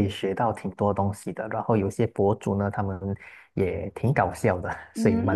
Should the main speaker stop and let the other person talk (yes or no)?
yes